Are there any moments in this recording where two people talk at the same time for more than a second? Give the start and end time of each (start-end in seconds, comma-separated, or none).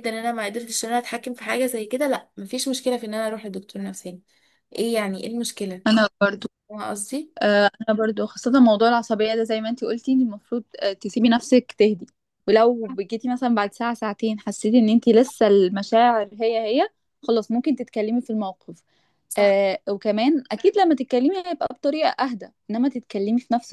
none